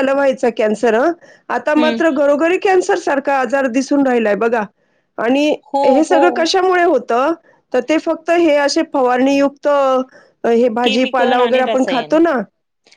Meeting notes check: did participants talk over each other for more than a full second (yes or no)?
yes